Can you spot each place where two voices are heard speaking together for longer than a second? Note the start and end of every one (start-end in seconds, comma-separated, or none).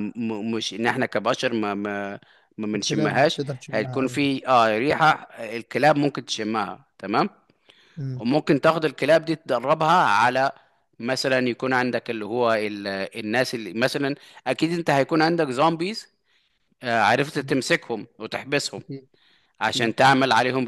2.7-4.2